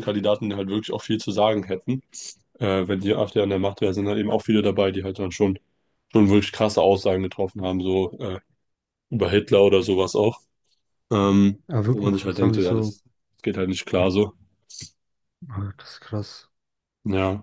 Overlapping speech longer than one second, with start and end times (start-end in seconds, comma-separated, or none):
11.7-13.0